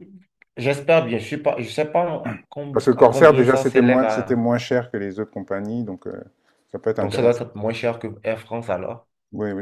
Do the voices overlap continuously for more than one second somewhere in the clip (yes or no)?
yes